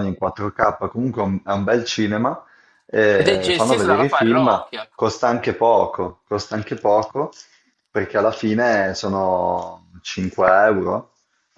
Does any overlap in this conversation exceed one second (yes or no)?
yes